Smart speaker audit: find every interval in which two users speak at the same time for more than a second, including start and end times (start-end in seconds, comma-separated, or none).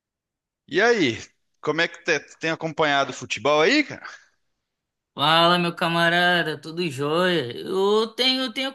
none